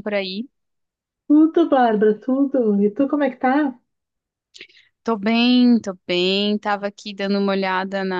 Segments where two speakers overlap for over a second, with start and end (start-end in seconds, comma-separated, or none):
none